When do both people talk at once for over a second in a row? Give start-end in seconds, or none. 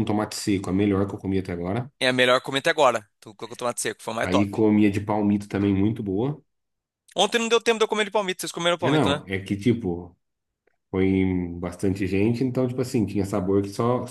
none